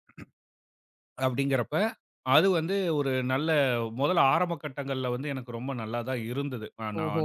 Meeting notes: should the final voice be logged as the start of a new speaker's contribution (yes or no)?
no